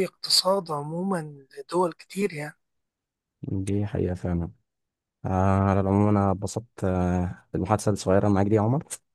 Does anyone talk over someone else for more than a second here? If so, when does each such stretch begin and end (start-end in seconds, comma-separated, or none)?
none